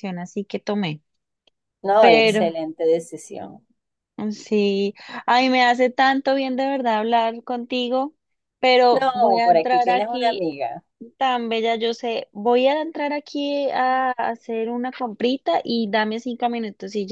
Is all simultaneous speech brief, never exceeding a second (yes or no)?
no